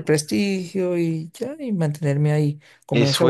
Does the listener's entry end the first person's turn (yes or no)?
yes